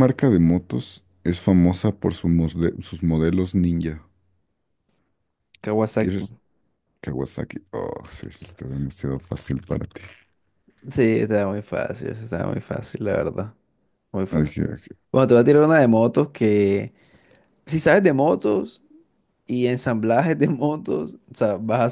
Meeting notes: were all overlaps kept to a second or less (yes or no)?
yes